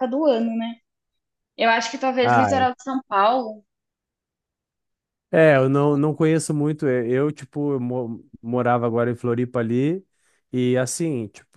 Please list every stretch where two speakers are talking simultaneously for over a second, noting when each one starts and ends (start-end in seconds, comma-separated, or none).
none